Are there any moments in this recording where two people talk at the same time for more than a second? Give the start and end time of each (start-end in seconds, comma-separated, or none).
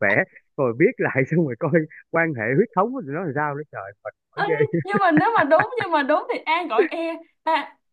none